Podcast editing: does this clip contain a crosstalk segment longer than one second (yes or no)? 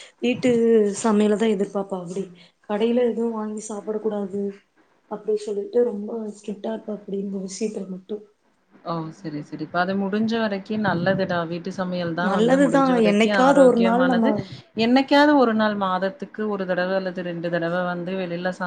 yes